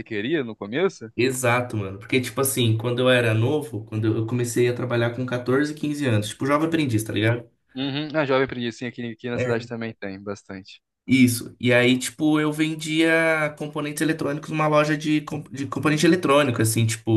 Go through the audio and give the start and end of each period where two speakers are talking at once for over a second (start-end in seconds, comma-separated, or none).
none